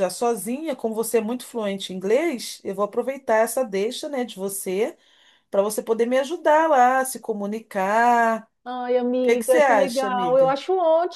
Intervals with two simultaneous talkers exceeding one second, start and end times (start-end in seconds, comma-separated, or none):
9.2-10.6